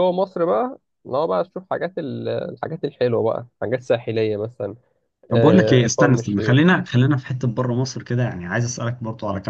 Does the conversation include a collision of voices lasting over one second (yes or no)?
yes